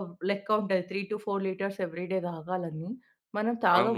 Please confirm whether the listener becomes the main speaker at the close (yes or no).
yes